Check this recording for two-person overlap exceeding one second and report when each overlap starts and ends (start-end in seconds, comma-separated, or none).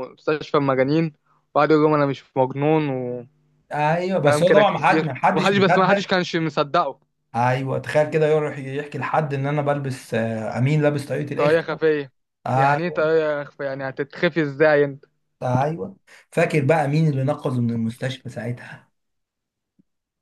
4.2-6.1